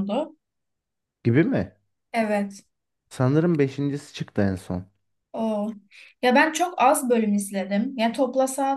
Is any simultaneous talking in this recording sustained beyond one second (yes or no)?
no